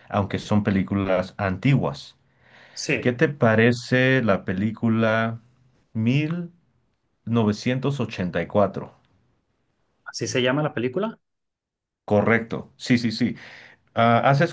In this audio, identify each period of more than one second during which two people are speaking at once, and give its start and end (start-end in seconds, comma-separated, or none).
none